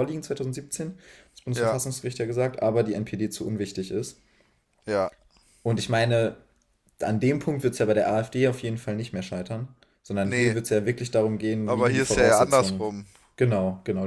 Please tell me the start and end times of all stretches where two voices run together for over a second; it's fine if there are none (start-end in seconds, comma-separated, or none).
11.7-12.9